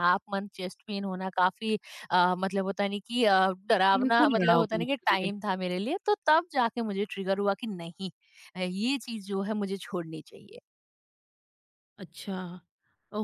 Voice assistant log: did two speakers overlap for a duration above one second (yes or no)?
yes